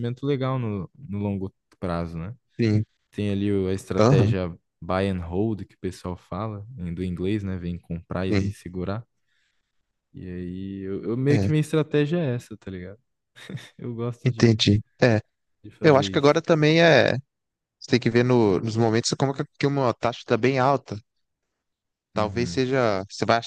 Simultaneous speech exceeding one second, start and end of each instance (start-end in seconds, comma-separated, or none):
none